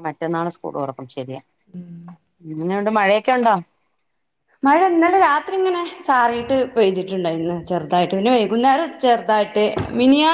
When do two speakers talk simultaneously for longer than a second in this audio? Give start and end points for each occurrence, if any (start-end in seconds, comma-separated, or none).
none